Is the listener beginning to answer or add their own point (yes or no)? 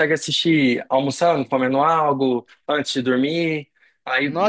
yes